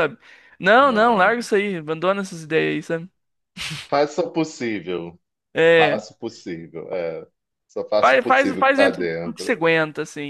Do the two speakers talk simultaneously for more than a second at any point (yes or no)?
yes